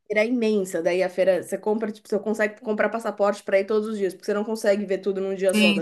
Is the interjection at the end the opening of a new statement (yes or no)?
yes